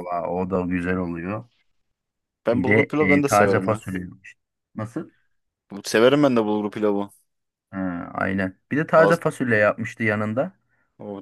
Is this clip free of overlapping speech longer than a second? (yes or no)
no